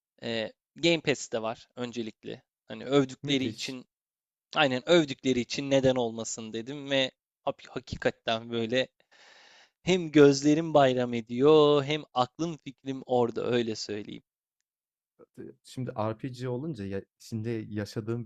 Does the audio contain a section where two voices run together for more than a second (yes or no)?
no